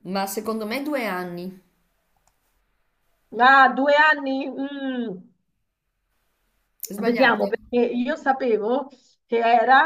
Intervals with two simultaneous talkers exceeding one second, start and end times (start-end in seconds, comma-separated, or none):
none